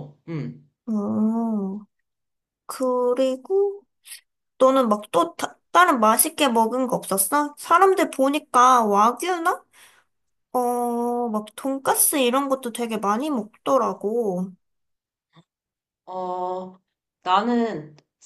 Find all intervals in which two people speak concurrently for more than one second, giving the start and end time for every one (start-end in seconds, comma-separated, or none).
none